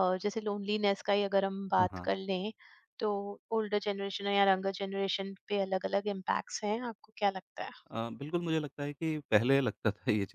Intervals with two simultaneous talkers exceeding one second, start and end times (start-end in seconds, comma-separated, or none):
none